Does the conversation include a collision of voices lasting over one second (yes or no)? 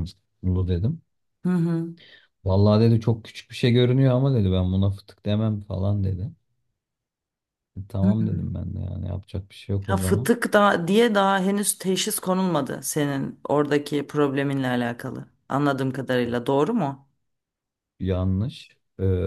no